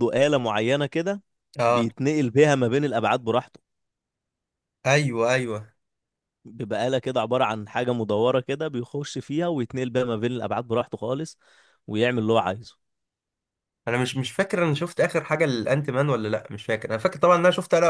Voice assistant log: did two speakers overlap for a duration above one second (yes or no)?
no